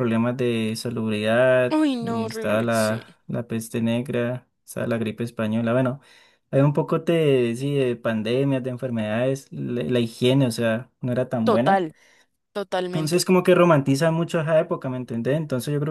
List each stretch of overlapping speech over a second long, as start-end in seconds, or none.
1.7-3.0